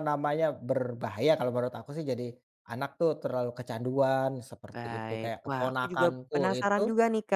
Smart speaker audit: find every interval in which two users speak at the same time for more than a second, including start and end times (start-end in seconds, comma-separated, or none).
4.7-6.8